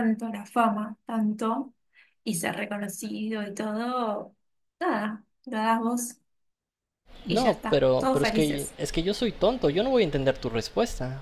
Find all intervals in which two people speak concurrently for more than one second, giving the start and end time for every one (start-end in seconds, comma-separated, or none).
7.3-8.8